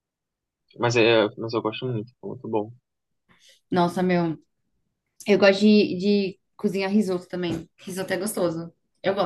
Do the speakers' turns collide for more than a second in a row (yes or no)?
no